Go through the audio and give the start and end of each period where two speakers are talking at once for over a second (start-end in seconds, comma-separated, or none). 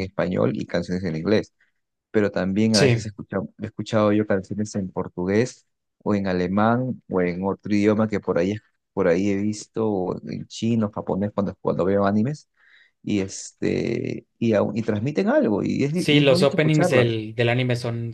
15.9-17.2